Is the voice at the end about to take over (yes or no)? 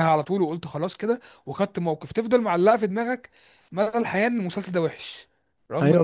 yes